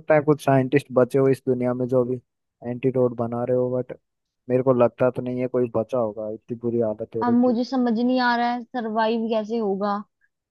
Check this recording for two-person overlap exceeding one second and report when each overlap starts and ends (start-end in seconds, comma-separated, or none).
none